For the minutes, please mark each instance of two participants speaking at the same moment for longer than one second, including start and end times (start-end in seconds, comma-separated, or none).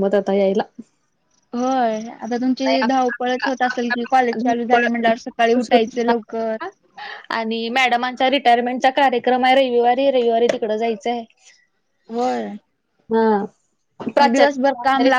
none